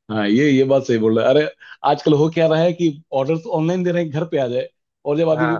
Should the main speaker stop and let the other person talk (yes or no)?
no